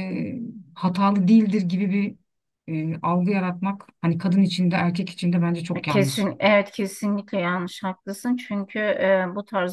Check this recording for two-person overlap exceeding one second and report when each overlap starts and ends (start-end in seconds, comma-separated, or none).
none